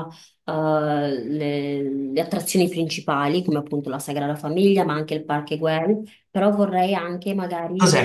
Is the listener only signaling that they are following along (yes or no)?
no